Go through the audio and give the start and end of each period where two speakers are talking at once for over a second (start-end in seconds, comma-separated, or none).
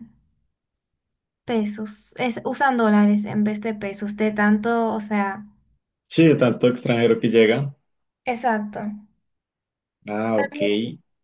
none